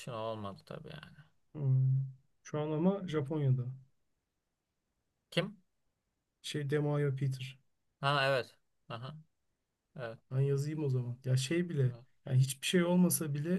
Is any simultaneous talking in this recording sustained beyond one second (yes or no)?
no